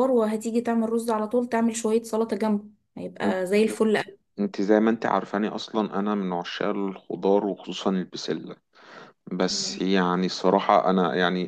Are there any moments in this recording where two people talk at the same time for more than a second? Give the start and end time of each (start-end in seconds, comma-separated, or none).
none